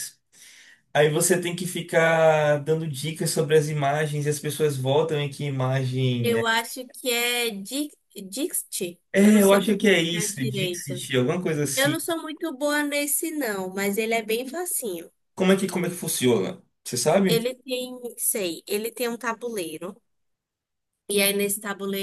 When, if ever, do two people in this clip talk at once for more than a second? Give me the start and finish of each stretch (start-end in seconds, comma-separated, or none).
9.1-11.1